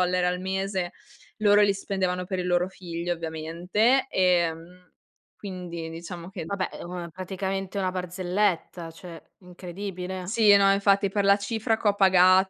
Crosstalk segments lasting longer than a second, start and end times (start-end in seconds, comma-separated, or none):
none